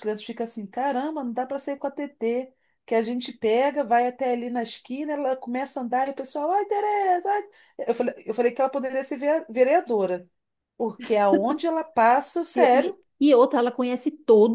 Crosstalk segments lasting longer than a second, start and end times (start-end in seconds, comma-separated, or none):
none